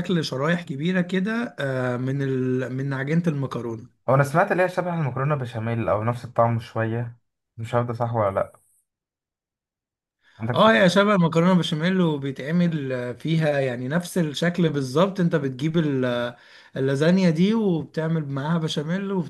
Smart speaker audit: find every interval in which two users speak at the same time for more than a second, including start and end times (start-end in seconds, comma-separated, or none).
none